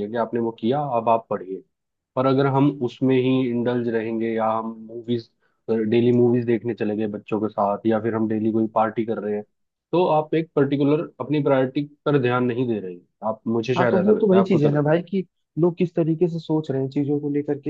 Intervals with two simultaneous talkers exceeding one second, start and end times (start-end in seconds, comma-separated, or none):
13.8-15.0